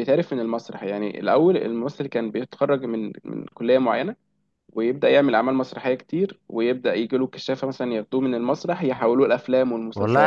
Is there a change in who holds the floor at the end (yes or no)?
yes